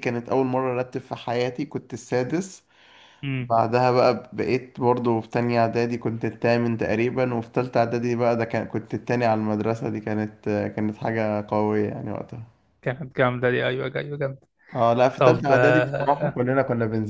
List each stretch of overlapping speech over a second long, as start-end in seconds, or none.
15.2-16.4